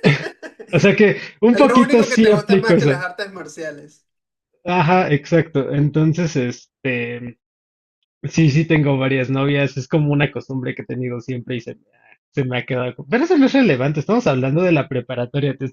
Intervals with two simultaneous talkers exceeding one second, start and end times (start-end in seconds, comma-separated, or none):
1.5-3.0